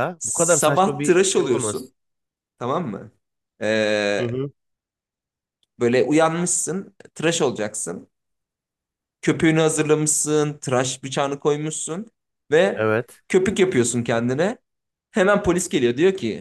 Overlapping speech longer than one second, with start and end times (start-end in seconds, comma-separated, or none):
0.6-1.9